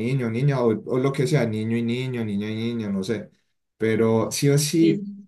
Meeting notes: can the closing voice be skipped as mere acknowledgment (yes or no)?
yes